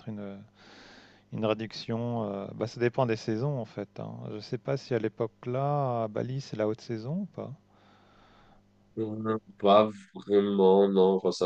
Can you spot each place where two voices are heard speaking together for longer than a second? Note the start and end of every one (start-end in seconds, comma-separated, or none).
none